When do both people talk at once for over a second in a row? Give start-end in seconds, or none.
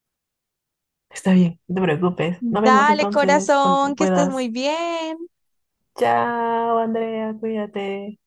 2.7-4.5